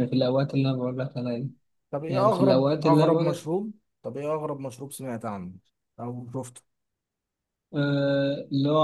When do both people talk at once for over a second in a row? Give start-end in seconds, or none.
2.1-3.4